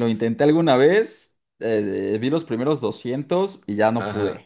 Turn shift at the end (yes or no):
yes